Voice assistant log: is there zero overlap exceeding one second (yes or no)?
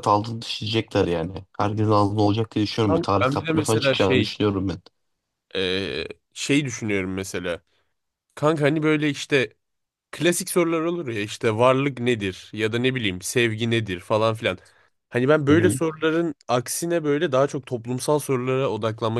no